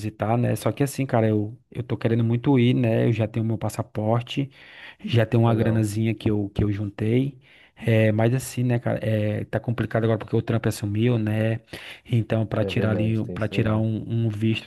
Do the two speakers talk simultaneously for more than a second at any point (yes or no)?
yes